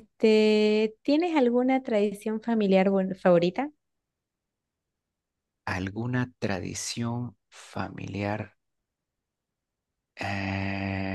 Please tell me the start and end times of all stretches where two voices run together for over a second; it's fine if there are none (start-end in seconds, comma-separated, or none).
none